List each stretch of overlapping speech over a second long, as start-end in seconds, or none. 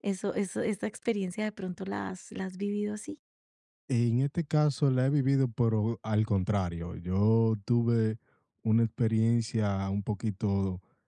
none